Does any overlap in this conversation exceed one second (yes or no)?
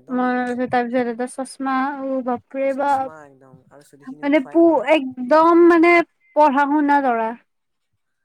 yes